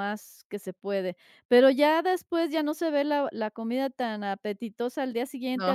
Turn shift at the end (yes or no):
no